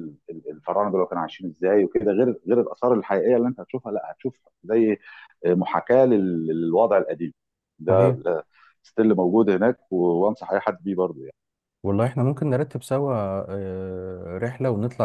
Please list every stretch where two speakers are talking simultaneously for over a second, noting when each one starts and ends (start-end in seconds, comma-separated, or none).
none